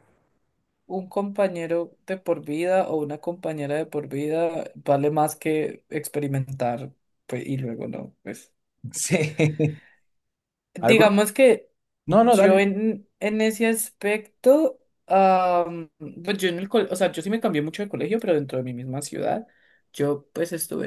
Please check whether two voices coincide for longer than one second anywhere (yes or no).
no